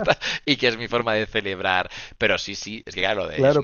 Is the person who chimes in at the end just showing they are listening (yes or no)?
no